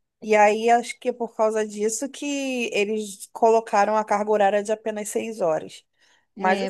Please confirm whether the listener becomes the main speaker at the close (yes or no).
yes